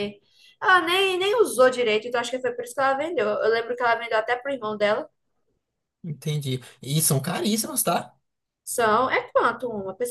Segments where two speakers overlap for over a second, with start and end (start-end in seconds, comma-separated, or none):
none